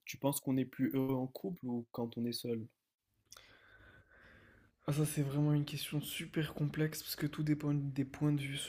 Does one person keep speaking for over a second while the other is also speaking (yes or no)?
no